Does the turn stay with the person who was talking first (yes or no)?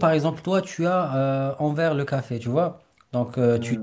yes